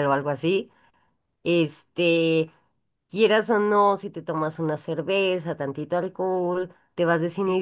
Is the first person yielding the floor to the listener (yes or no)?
no